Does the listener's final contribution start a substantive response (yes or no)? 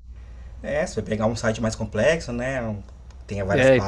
no